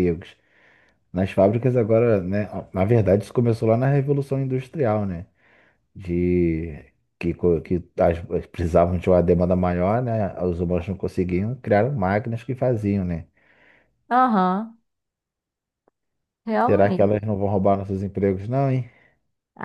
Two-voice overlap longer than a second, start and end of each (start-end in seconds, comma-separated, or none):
none